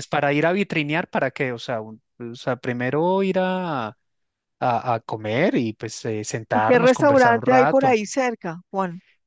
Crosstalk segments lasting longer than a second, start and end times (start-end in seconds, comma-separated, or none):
6.5-8.0